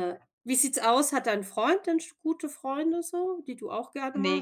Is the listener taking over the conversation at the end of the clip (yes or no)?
yes